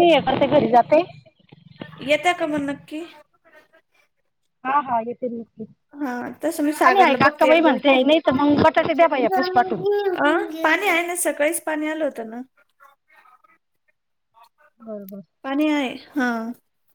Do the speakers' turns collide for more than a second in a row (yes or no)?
yes